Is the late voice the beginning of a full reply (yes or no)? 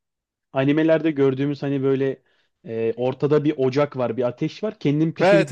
yes